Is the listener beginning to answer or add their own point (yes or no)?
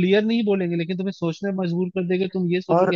yes